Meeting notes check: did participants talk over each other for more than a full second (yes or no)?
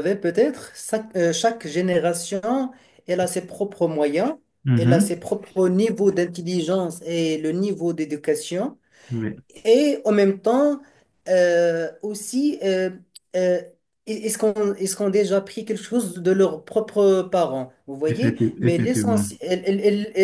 yes